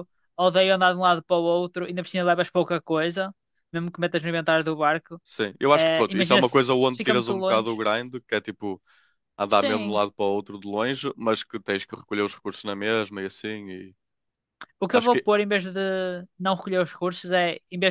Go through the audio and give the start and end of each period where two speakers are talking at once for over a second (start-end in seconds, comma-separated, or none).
5.7-7.8